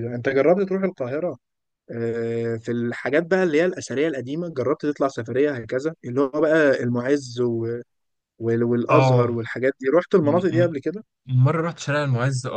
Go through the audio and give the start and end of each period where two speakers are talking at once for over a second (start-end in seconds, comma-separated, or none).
none